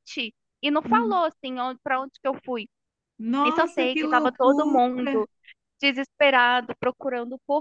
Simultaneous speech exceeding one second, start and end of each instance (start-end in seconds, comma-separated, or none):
3.4-4.8